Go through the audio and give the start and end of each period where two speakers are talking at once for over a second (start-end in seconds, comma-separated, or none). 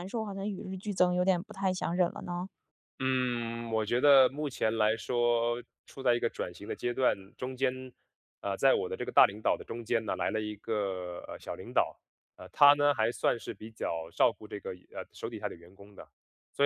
none